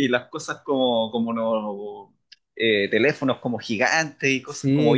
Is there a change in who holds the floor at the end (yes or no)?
yes